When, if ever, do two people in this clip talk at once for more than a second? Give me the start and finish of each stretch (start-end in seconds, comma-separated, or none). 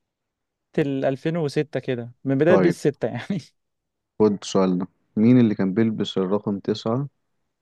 none